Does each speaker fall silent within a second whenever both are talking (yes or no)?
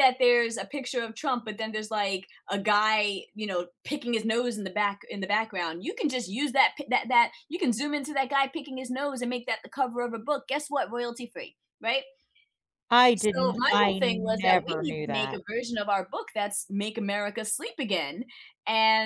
no